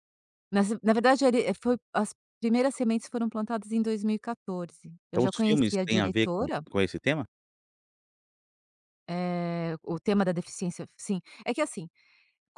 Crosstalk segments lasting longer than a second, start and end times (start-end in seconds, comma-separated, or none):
5.1-6.6